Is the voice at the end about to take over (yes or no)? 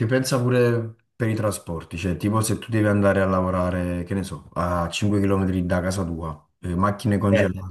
no